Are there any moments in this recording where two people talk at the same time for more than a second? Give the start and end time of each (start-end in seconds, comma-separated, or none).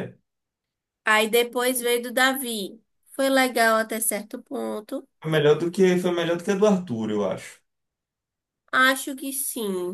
none